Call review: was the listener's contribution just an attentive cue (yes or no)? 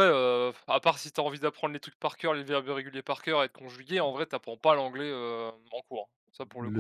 no